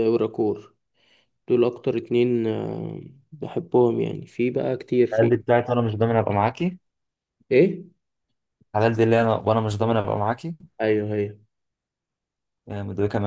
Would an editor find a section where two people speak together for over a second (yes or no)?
no